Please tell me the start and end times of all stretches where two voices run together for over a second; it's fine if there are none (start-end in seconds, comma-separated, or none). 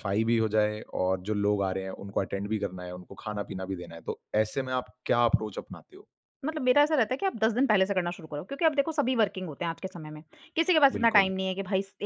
none